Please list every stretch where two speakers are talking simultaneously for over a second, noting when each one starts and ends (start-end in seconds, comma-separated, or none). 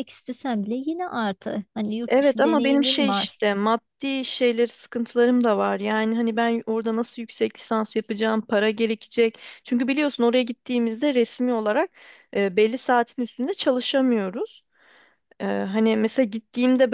2.1-3.4